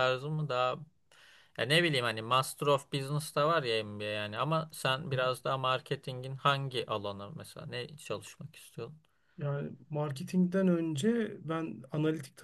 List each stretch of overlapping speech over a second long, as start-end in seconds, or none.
none